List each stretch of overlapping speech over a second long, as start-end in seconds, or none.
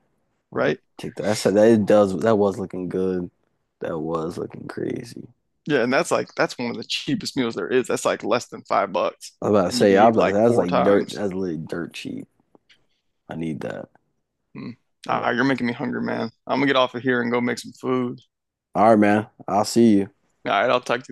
9.4-11.2